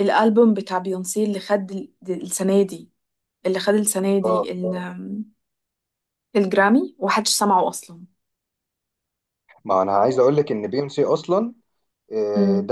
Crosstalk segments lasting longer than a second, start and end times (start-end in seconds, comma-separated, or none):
none